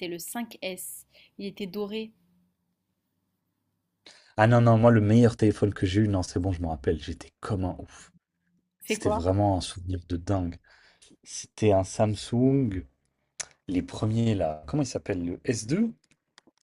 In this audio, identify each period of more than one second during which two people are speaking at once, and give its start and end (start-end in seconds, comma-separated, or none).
none